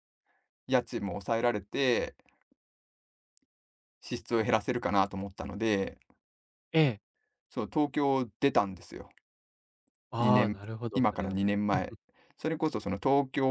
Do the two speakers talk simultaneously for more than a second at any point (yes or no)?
yes